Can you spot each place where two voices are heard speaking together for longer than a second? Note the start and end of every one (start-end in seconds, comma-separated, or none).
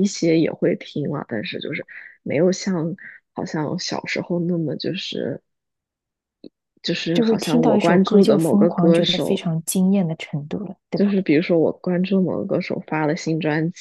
7.1-9.4